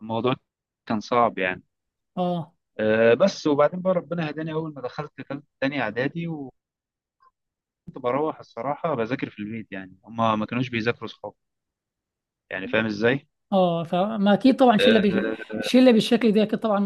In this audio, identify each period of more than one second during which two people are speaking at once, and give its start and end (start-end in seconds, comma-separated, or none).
none